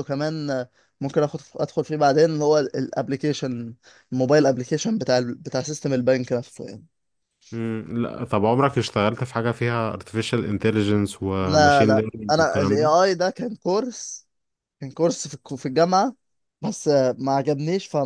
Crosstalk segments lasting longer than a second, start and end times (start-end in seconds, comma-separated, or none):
11.4-13.1